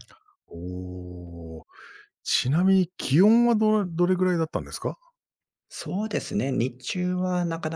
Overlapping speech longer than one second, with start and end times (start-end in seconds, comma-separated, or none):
none